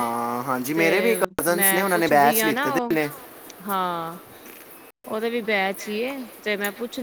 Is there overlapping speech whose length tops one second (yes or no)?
yes